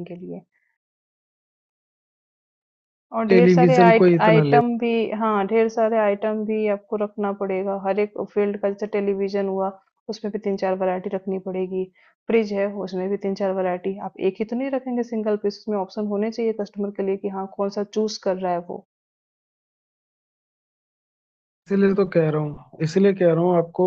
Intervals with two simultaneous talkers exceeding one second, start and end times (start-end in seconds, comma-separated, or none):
3.3-4.6